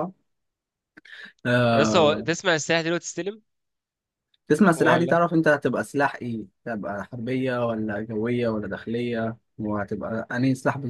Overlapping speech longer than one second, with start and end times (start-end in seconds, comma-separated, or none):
none